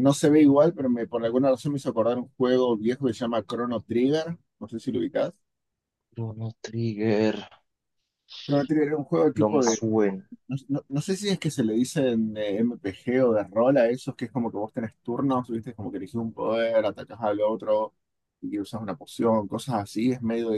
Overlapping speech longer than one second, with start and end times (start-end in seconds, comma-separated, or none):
none